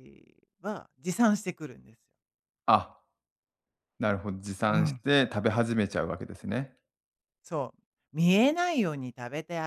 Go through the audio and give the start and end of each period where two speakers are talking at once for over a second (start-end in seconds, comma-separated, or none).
none